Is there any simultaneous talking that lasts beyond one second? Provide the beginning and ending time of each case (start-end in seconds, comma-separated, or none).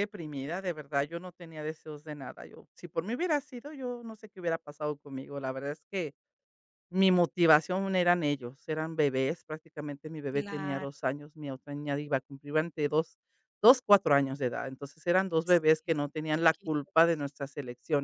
15.4-16.9